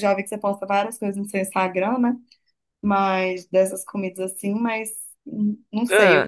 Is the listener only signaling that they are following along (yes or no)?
yes